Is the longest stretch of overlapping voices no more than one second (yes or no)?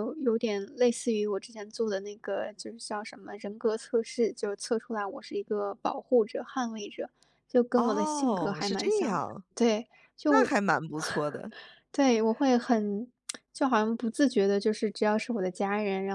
no